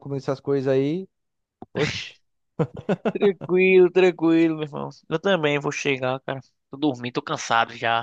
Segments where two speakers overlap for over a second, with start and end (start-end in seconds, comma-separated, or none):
none